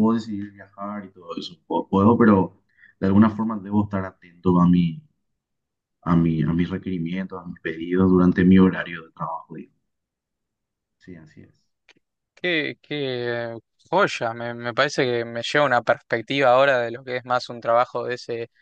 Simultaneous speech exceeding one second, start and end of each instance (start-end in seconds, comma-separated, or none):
none